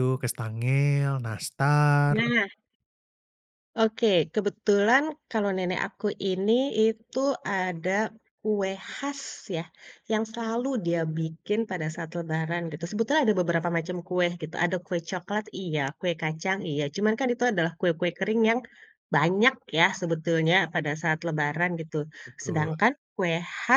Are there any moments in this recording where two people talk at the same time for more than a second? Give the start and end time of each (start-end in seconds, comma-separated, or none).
none